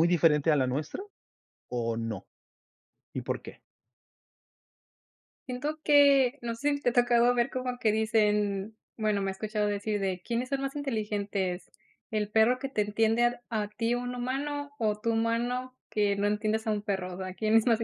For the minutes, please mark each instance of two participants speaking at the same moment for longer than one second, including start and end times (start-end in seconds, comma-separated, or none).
none